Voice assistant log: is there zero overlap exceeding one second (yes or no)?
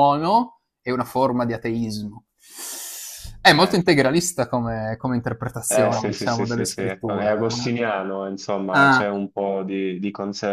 no